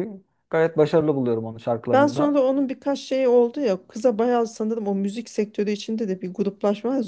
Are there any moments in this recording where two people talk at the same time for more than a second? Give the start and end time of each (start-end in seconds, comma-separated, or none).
none